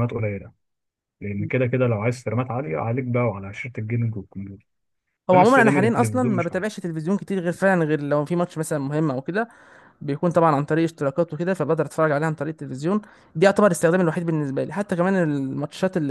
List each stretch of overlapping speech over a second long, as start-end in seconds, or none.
5.3-6.7